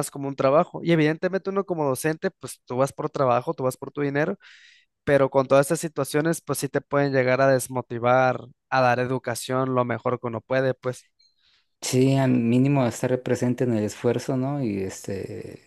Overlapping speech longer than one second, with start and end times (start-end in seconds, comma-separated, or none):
none